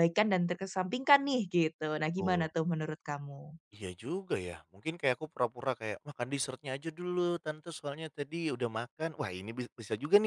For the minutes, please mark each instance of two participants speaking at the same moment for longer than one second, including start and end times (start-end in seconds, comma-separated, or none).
none